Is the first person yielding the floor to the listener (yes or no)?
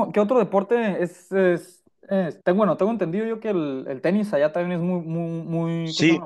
yes